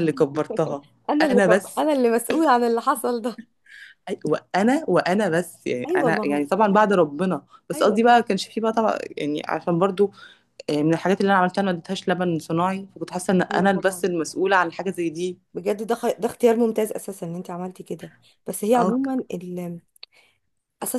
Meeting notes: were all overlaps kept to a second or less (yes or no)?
yes